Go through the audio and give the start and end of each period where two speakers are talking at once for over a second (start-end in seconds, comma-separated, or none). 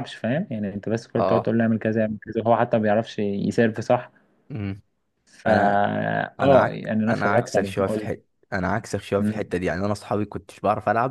6.4-8.2